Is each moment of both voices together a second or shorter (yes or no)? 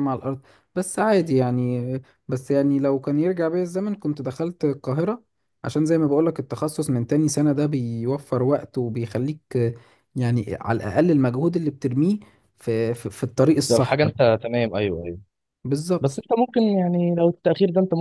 yes